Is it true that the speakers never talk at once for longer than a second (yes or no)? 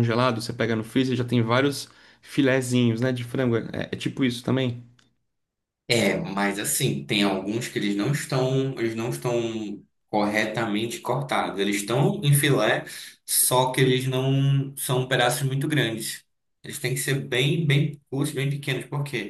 yes